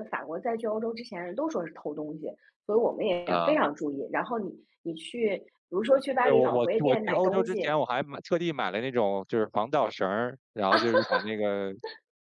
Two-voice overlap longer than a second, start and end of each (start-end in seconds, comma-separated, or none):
6.2-7.7